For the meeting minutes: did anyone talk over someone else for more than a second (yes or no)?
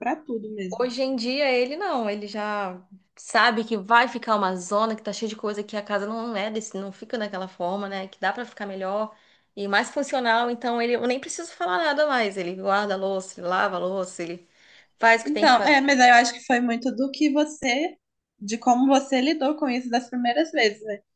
no